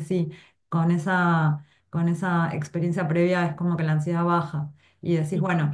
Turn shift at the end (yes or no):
no